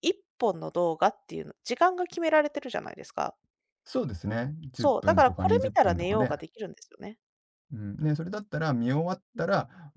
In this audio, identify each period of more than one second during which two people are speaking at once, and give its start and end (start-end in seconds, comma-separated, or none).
4.7-6.3